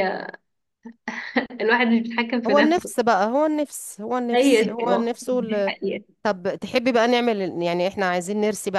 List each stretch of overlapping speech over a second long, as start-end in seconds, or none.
4.3-5.7